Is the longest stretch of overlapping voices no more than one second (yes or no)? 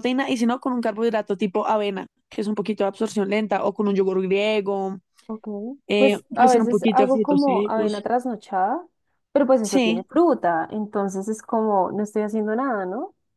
no